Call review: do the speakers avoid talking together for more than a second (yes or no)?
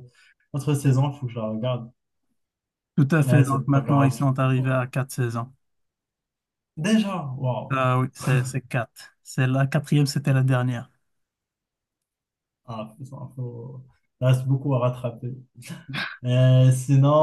no